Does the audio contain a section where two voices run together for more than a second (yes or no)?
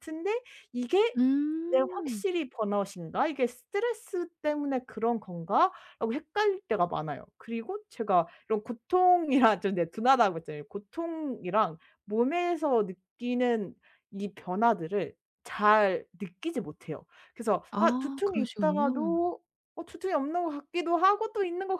yes